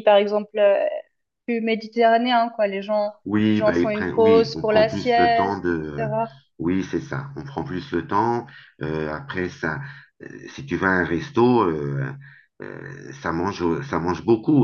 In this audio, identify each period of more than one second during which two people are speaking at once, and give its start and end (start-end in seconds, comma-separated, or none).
3.2-6.1